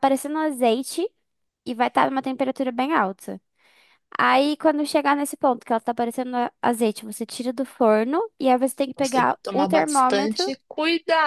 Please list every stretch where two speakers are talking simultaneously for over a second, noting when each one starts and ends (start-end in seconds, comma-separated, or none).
8.9-10.5